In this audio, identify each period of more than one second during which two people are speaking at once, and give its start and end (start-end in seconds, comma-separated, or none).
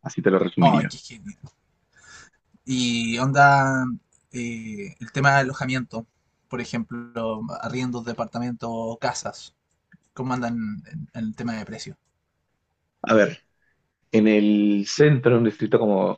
none